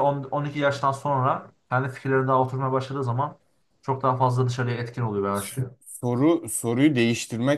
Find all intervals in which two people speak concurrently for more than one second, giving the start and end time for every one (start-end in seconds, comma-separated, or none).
none